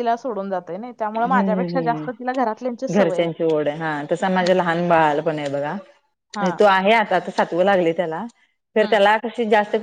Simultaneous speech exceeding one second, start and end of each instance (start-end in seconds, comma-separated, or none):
1.2-3.2